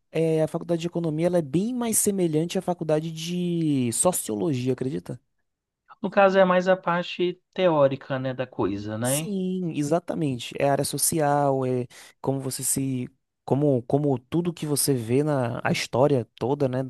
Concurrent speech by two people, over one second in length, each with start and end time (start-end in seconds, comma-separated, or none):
none